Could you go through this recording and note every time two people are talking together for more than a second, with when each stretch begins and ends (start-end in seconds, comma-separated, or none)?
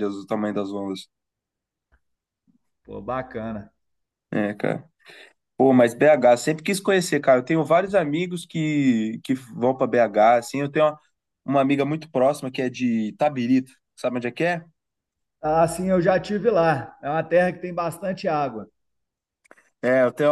none